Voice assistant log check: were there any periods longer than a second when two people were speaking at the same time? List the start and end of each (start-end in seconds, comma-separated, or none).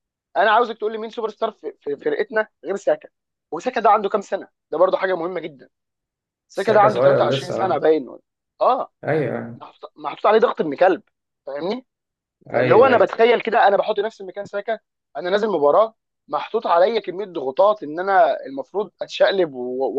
6.5-7.9